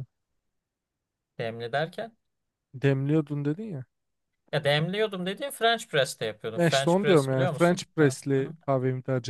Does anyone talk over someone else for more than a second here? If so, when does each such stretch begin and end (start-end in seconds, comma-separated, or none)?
6.5-8.2